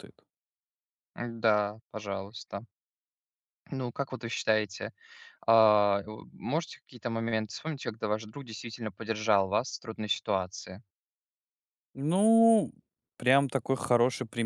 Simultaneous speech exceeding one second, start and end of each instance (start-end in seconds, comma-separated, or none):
none